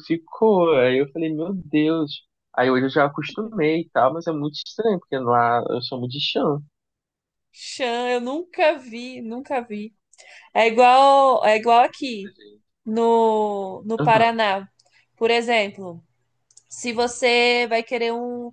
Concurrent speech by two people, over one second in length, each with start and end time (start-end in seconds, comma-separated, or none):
none